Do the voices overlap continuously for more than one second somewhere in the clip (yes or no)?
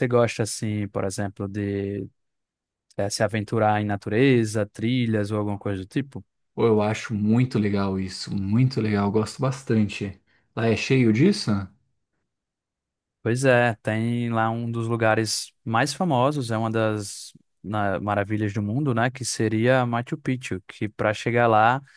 no